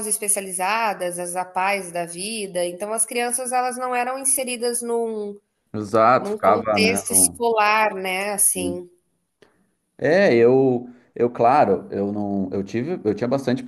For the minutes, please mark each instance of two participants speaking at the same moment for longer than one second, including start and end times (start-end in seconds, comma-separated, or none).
6.2-7.4